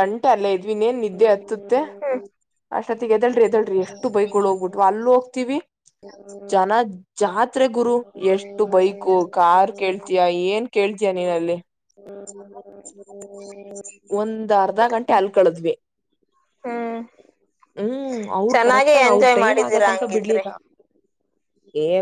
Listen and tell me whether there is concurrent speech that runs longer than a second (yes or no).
yes